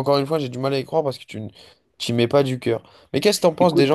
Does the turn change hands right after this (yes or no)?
no